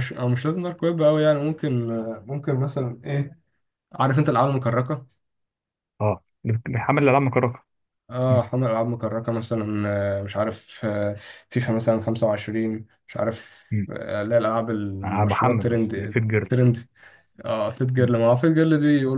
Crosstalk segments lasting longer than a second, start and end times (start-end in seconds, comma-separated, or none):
15.0-16.5